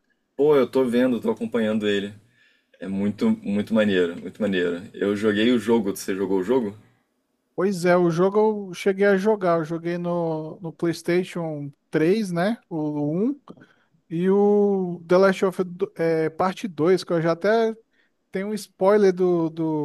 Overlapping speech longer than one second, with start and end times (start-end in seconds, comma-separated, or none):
none